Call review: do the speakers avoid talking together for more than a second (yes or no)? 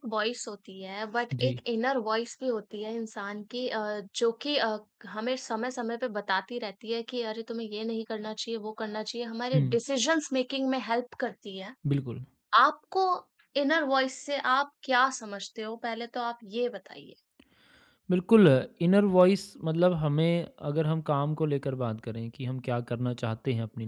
yes